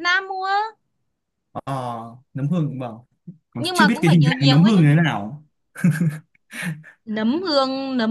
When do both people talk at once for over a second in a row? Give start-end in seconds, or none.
3.6-4.9